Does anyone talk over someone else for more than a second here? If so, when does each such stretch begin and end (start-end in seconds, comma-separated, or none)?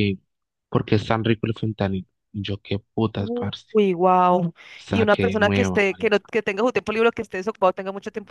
4.9-6.3